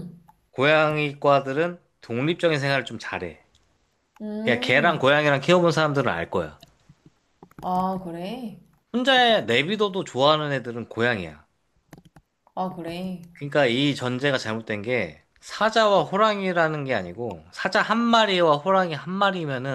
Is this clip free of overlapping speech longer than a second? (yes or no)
yes